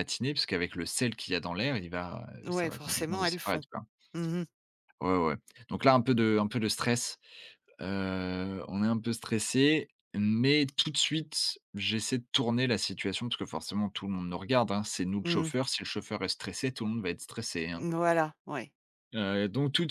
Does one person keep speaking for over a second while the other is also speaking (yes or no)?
yes